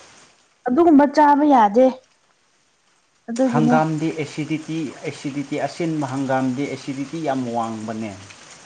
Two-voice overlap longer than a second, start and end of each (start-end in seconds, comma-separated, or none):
none